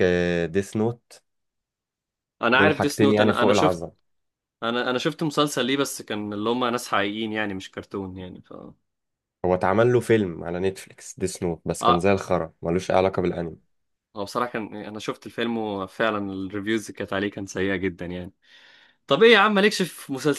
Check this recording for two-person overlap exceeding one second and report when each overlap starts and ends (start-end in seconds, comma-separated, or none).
2.5-3.8